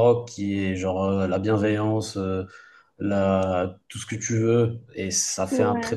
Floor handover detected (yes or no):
no